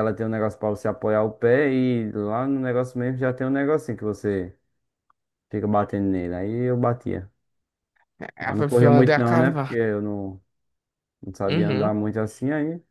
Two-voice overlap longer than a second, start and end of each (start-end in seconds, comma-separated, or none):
8.4-9.8